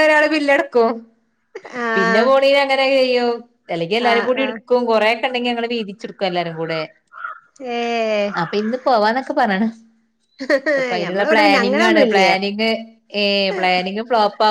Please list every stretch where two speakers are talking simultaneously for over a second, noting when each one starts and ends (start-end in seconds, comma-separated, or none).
11.0-12.3